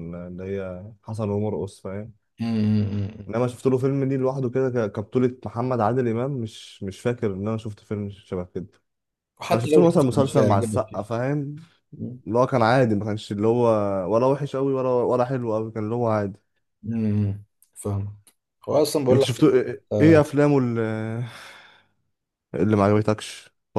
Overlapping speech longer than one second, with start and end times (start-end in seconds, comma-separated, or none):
9.5-11.0